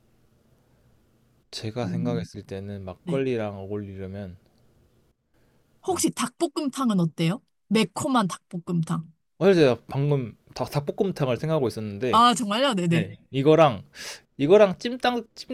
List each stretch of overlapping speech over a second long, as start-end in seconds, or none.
none